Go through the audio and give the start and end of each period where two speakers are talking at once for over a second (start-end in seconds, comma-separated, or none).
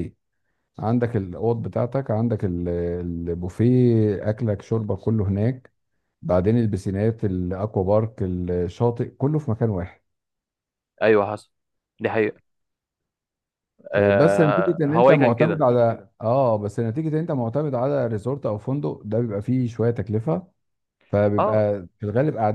13.9-15.6